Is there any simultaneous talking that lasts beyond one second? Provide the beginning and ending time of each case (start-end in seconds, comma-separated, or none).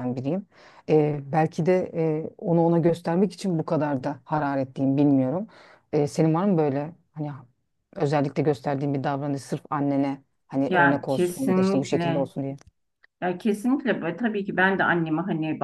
10.7-12.3